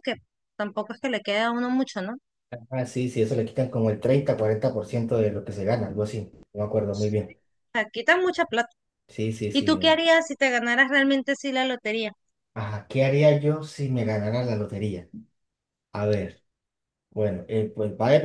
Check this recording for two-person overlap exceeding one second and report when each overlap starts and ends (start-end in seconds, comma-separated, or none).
none